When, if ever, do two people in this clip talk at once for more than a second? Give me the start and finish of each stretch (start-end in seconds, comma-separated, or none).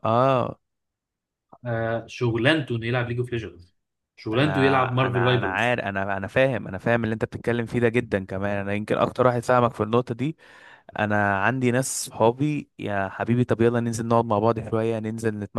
4.3-5.8